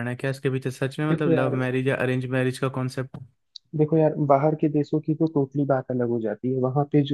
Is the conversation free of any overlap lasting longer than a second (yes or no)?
yes